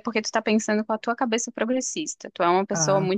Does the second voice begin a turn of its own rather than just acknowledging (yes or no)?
no